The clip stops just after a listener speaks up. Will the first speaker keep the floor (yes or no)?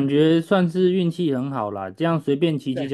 yes